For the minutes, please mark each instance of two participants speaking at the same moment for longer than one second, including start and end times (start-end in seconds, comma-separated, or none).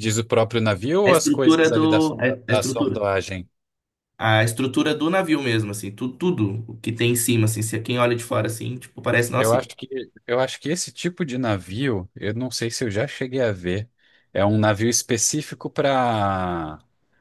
1.1-3.0